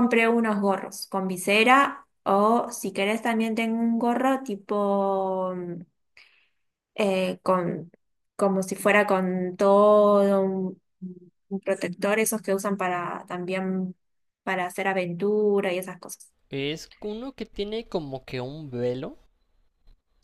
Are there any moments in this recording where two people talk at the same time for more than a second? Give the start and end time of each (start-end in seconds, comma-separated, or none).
none